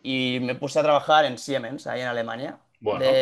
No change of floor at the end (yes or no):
yes